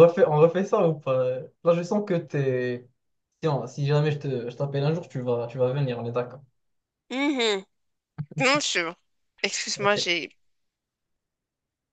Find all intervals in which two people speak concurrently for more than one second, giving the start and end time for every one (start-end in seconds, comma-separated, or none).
none